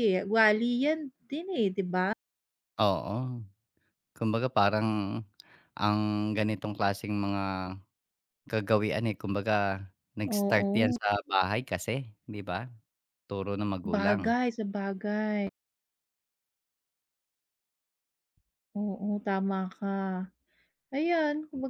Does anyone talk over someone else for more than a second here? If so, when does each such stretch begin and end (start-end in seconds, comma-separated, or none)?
none